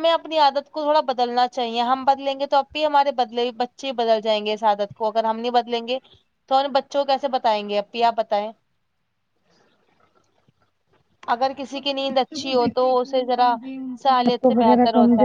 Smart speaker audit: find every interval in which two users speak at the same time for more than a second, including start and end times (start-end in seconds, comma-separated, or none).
11.7-13.5